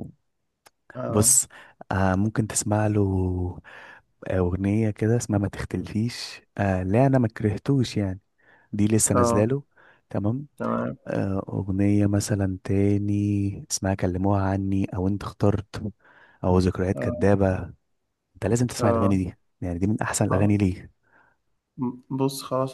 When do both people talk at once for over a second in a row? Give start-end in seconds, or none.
none